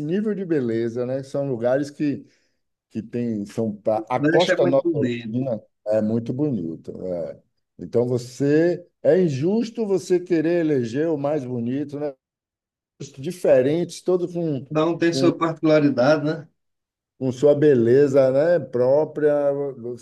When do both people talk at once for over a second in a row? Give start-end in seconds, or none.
4.2-5.4